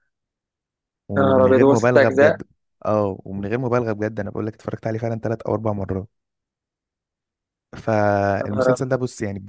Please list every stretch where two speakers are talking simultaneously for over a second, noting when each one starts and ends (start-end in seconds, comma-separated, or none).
1.2-2.4